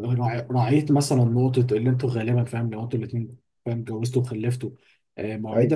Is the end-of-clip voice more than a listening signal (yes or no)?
no